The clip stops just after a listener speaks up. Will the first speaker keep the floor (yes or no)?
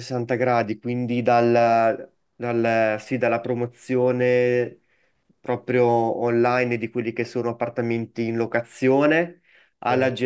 yes